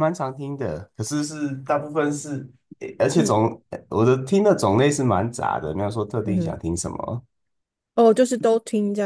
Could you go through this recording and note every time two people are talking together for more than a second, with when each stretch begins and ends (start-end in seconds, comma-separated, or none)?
none